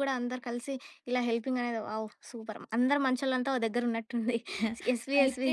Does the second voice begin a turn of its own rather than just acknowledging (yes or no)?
yes